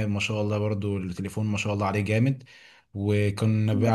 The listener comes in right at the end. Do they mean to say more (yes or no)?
no